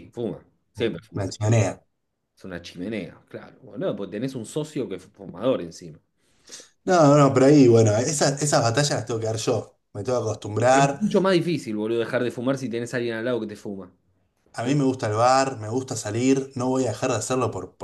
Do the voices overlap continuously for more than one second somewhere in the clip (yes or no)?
no